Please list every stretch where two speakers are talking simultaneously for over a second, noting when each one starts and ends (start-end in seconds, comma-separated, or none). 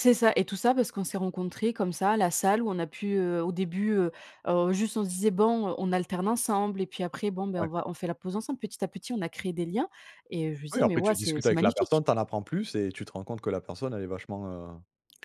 10.7-12.0